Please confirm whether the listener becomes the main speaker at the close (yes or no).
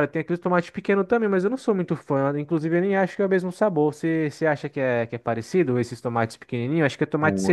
yes